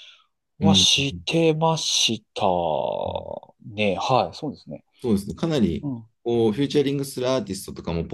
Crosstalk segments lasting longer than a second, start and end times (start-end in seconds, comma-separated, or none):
none